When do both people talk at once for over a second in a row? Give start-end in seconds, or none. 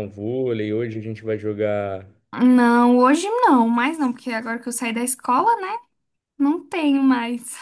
none